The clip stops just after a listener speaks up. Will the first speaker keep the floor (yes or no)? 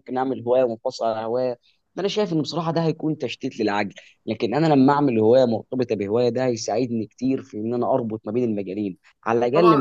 no